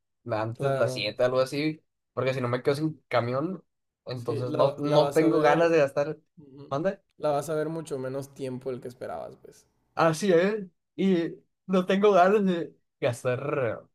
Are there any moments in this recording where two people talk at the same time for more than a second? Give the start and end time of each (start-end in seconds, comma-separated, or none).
4.2-5.7